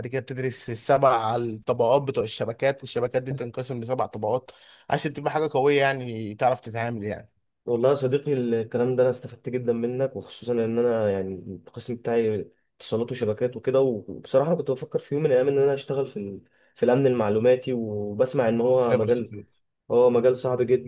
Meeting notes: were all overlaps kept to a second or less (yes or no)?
yes